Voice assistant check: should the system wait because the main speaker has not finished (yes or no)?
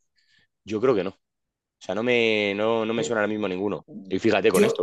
yes